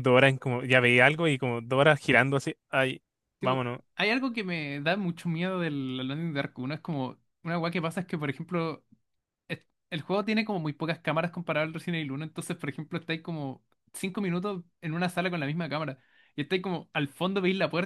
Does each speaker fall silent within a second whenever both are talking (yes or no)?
yes